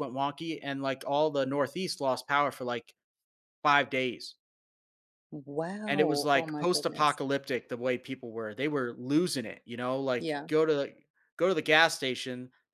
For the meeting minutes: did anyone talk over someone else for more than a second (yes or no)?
yes